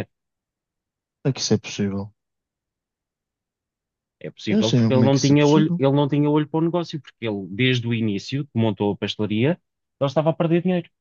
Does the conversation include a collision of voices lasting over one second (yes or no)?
yes